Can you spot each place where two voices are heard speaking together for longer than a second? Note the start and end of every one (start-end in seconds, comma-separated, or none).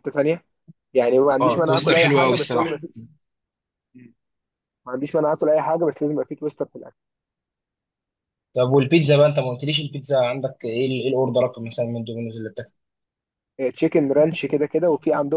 1.4-2.8